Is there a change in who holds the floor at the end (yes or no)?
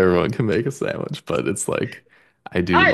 yes